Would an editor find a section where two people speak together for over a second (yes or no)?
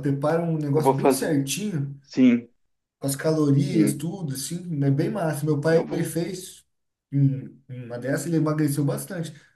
no